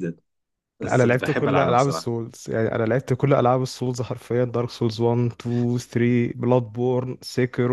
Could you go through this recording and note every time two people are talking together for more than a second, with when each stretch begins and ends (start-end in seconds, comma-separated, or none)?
0.8-2.1